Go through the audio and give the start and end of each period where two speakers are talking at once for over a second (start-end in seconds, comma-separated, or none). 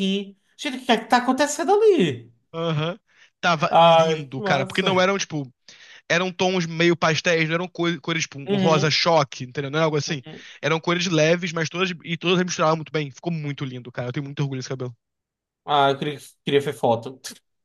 3.7-4.9